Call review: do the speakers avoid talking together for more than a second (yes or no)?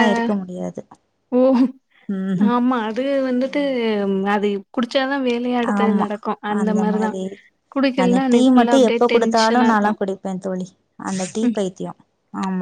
no